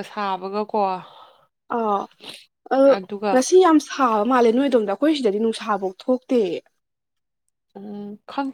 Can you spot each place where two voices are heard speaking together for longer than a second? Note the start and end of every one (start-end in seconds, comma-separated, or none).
none